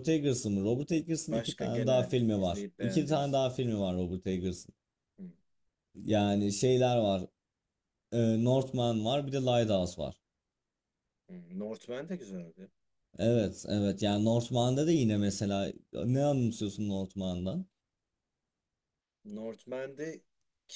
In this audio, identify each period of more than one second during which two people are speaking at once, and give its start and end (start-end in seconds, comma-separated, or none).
1.3-3.4